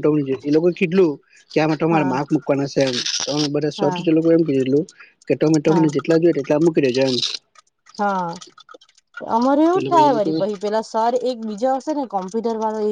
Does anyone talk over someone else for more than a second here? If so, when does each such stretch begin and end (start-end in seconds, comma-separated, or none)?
none